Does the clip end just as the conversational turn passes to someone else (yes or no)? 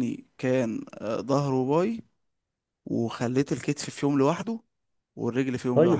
yes